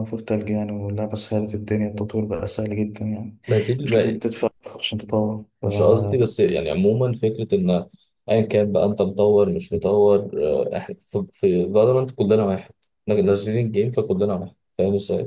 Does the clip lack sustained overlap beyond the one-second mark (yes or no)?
yes